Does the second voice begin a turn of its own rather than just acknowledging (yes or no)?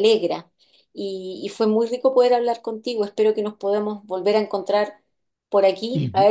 no